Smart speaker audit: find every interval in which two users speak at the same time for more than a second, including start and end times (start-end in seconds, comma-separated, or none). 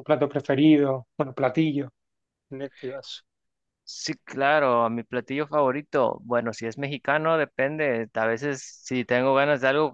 none